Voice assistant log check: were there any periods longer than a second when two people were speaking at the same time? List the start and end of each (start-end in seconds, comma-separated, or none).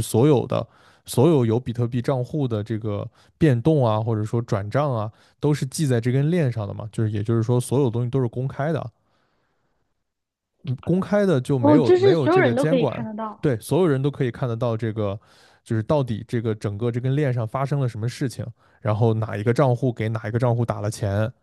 11.6-13.5